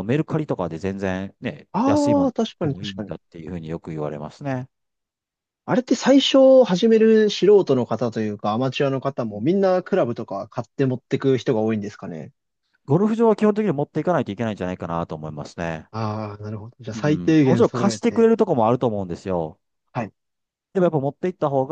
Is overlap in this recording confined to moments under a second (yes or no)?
no